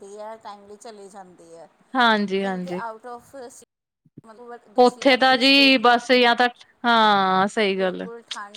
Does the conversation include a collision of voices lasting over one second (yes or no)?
yes